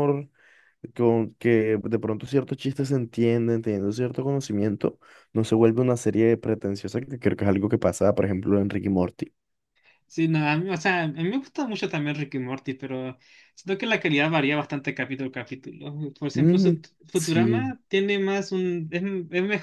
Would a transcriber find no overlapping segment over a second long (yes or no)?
no